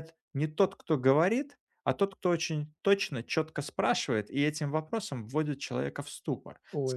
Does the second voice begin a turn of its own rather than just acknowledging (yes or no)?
no